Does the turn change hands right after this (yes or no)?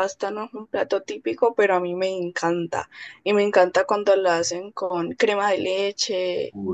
no